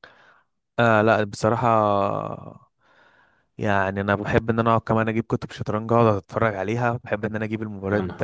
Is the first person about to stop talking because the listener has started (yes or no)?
no